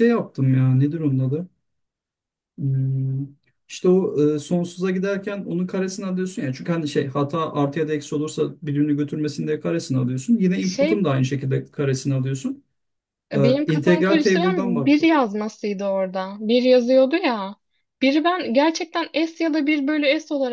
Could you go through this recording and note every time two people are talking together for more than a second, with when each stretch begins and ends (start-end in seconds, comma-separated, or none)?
13.3-15.1